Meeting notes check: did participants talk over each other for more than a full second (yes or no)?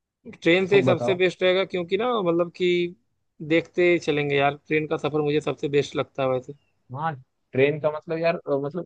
no